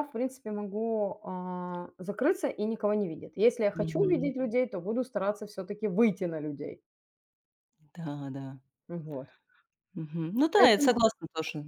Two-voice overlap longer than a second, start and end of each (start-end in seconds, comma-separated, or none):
none